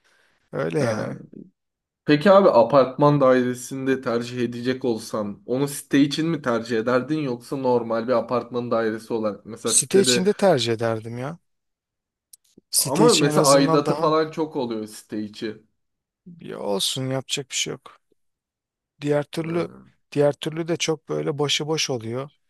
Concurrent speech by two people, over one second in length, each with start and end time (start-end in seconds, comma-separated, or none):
12.8-14.1